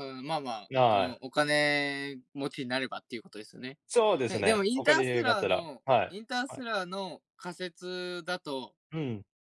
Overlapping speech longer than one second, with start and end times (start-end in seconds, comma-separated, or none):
4.3-6.6